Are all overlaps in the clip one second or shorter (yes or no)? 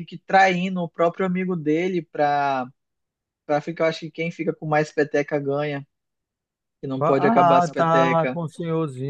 no